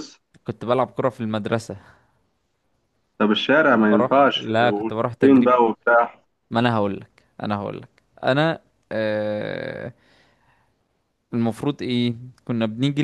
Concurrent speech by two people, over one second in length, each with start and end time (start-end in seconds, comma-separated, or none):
3.8-5.6